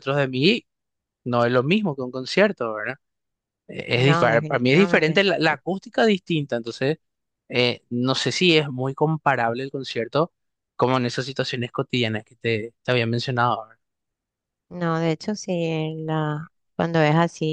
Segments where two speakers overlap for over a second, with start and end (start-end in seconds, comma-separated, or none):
3.9-5.2